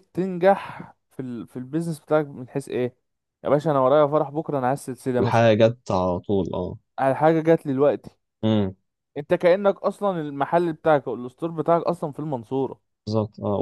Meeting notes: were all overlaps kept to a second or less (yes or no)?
yes